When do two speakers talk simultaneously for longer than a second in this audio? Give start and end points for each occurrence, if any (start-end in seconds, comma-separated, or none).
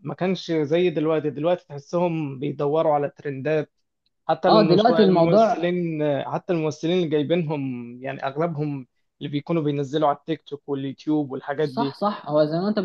4.5-5.7